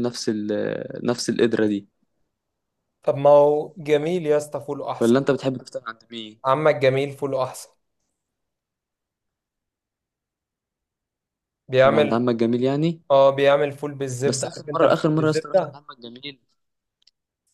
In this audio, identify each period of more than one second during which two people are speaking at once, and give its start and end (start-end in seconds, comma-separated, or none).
14.2-15.8